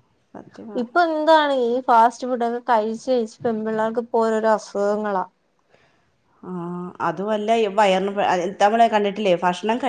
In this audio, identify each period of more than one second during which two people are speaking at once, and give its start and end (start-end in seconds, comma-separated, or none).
none